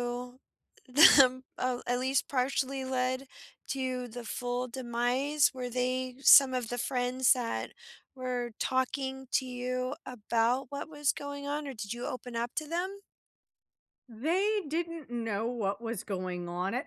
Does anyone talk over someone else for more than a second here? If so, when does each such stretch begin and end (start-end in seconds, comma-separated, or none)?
none